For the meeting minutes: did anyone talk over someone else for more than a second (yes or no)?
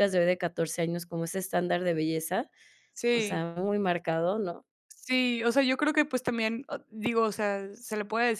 no